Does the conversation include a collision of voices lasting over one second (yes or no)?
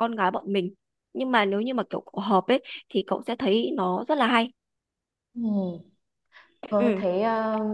no